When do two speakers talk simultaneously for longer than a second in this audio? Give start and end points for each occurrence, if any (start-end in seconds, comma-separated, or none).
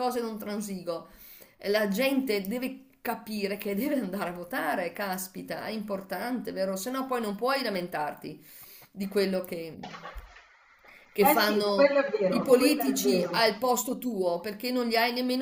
11.2-13.4